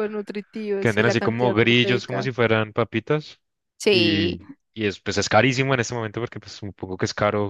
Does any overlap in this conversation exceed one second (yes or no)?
yes